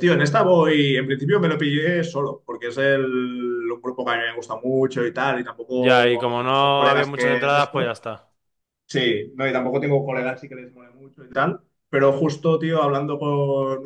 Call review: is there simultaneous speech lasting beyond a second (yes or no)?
yes